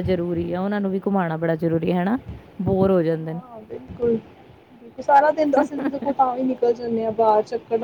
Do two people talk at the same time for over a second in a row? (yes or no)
no